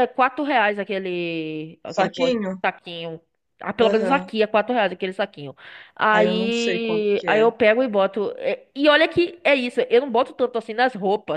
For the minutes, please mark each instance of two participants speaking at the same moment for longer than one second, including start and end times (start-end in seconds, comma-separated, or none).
6.1-7.5